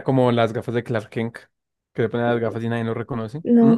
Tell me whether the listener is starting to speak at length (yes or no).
yes